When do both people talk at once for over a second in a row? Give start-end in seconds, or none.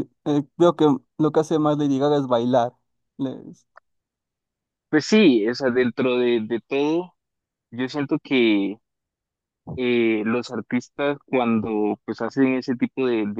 none